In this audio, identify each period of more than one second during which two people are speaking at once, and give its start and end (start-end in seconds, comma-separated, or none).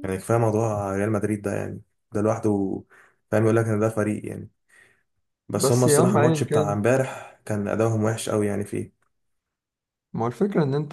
5.6-6.8